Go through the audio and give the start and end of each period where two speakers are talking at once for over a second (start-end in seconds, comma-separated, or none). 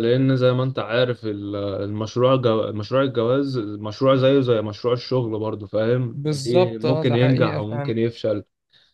6.1-7.9